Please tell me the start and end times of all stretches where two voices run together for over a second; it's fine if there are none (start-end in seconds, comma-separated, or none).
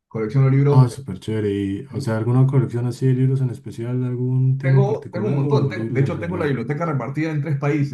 4.6-6.6